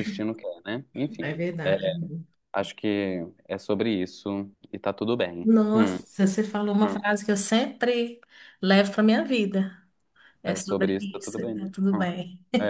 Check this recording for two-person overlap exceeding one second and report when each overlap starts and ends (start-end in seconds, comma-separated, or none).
10.4-12.1